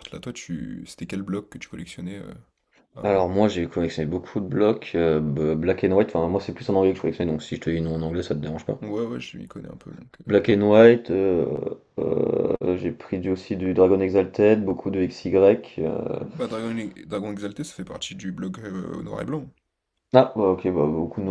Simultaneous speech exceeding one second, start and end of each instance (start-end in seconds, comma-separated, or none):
none